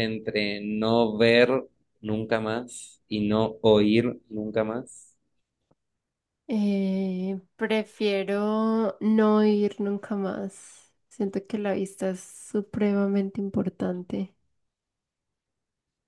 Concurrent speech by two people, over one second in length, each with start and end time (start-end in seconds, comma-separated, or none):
none